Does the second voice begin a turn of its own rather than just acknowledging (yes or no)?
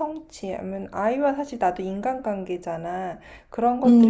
no